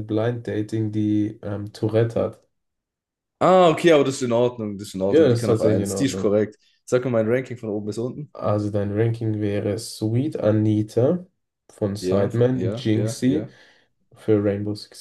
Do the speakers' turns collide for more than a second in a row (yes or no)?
yes